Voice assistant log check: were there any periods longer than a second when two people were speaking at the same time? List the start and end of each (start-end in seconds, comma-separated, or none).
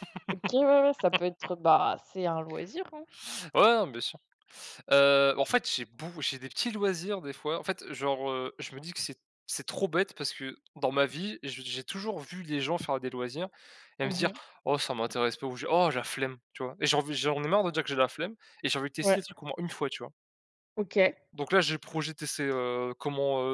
none